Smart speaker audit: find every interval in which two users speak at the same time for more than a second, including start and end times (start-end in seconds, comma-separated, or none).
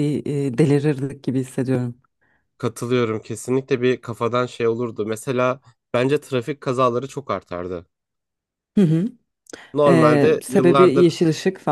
9.9-11.1